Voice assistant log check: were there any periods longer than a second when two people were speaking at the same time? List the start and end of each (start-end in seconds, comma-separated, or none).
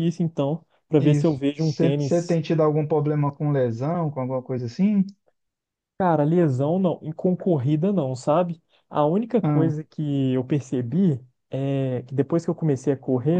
1.0-2.4